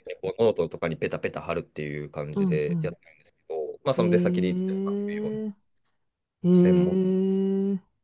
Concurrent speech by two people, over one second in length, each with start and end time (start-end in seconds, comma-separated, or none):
4.0-5.4